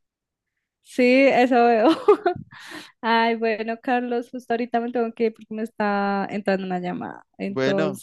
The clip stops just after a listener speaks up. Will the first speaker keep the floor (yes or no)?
yes